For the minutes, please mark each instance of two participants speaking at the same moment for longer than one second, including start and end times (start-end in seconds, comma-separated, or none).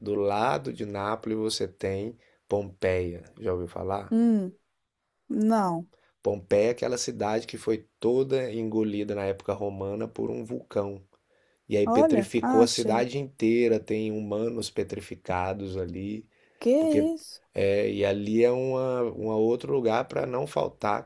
11.8-13.1